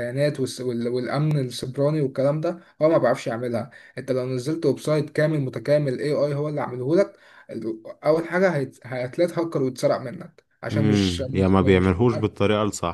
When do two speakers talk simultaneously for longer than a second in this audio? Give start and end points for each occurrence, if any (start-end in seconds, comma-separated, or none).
10.7-11.9